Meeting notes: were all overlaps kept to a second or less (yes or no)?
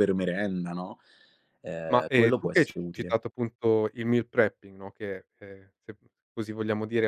no